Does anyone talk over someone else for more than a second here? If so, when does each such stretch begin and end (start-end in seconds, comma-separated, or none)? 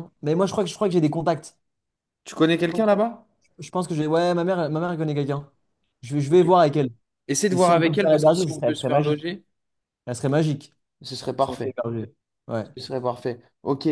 7.5-9.2